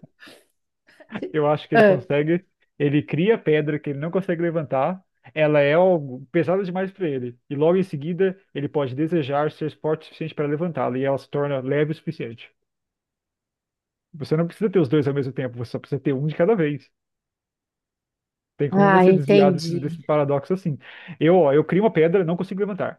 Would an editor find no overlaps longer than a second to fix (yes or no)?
no